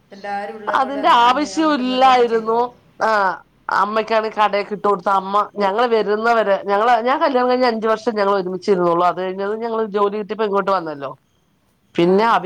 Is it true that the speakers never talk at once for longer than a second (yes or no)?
no